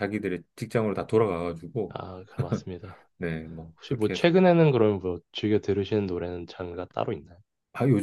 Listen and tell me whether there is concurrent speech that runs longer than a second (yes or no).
no